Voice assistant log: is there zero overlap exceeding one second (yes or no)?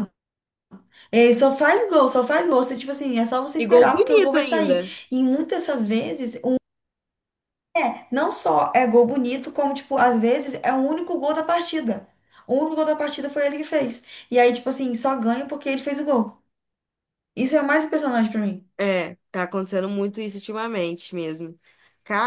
no